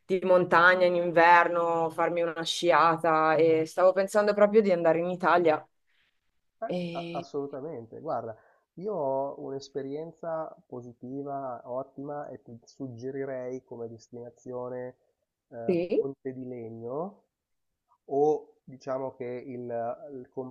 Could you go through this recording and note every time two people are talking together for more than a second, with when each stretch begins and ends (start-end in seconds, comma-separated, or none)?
none